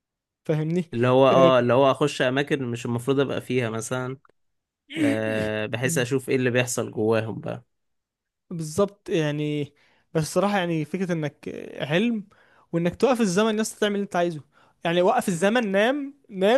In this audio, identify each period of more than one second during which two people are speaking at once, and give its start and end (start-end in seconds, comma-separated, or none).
none